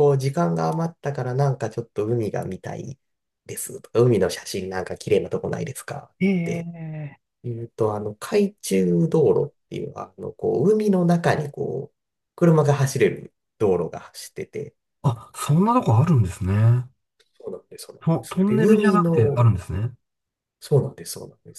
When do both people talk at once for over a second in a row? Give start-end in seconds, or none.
18.0-19.5